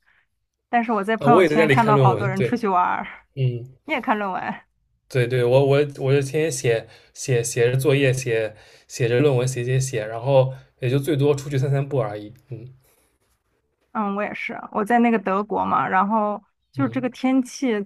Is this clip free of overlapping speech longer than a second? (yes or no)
no